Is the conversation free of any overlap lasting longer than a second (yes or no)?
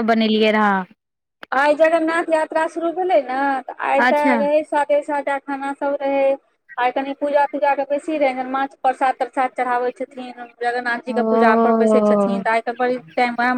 no